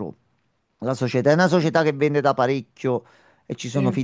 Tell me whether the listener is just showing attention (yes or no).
yes